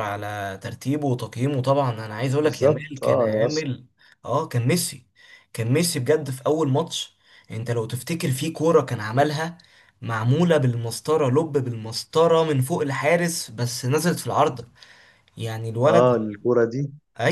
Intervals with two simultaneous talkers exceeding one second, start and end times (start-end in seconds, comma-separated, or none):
2.4-3.6